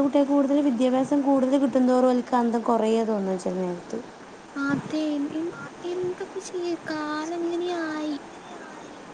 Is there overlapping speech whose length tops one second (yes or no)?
no